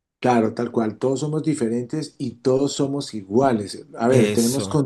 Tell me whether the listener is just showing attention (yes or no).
yes